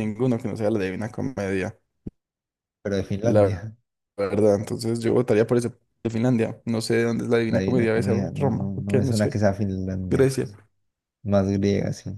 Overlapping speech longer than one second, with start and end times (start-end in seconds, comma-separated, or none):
7.5-9.4